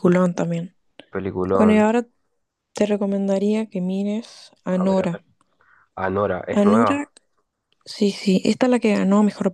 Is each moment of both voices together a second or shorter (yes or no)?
yes